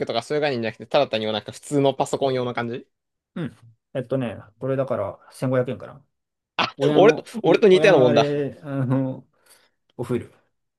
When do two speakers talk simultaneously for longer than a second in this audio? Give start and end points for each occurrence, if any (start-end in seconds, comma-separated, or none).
6.8-8.3